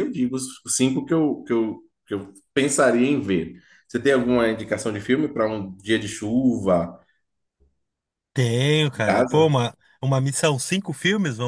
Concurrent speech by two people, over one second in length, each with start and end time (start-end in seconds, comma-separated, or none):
none